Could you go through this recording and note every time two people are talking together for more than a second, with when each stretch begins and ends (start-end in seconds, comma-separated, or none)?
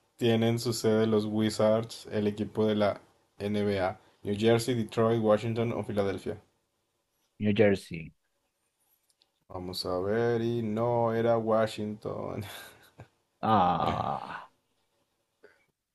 none